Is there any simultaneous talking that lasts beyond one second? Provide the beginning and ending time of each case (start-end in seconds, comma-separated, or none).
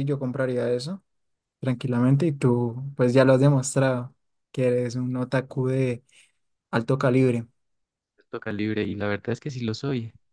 none